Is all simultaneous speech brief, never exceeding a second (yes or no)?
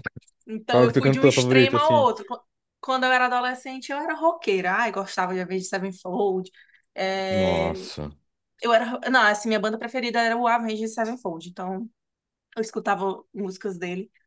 no